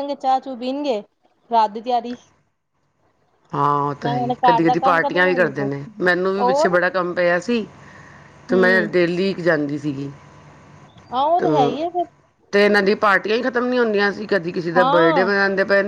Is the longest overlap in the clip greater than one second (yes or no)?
yes